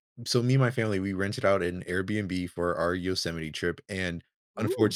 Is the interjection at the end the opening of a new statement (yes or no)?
no